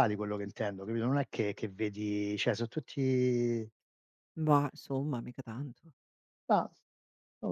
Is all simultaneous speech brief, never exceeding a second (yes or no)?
yes